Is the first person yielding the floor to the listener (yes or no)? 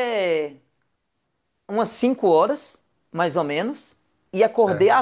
no